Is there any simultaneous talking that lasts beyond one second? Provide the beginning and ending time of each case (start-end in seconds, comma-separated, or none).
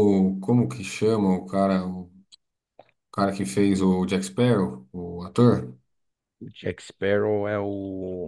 none